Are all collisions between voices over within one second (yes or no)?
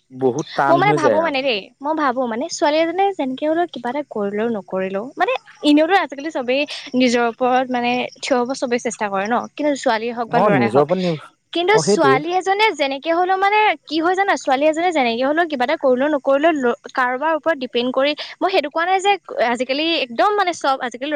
yes